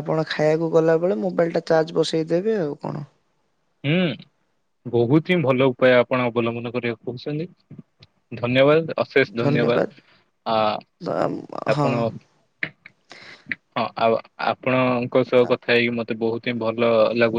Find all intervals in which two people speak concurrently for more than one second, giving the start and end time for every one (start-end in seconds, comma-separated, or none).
none